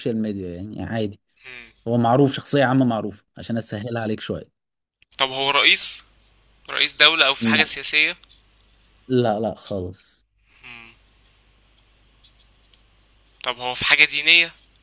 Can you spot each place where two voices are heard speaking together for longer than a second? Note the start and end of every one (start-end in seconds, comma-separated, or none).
none